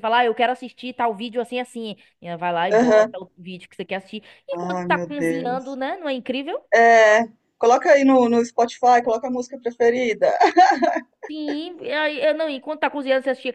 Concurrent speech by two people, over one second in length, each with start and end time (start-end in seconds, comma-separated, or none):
4.5-5.8